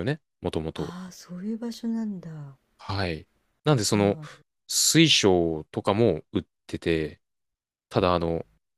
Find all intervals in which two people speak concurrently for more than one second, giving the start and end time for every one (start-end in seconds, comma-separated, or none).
none